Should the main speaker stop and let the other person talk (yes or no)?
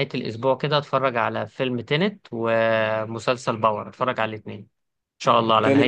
yes